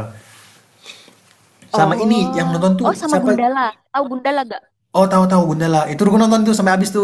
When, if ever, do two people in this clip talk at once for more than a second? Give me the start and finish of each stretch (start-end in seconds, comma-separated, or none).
1.7-3.4